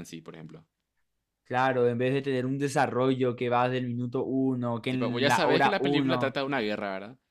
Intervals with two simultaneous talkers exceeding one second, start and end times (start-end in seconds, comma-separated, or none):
4.9-6.4